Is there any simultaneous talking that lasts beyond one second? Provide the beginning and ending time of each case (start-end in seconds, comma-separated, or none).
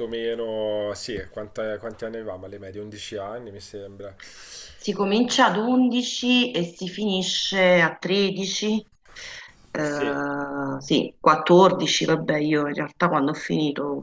none